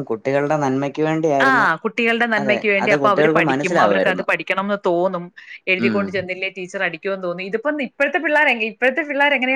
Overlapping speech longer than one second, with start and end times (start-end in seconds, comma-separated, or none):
2.4-4.3